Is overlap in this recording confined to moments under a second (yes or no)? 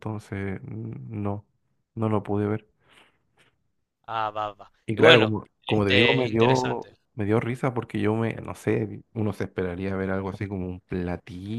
no